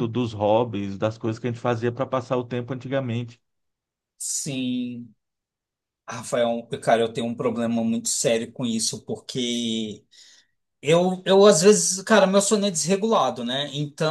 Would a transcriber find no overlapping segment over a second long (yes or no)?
yes